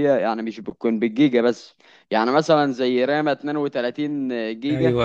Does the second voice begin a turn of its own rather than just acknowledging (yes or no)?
no